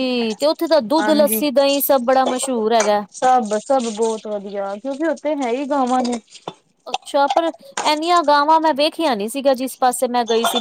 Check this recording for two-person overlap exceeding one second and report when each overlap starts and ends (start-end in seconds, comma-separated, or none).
none